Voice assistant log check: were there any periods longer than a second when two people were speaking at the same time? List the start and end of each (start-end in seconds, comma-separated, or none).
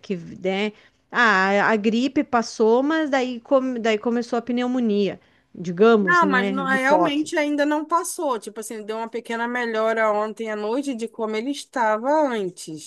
6.0-7.4